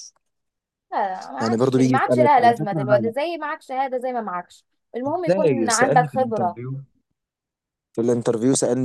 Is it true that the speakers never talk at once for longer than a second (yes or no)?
no